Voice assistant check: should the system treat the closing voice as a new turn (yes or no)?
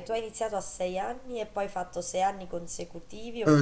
yes